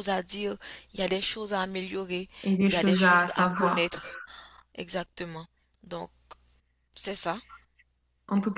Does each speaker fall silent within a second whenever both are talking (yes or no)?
no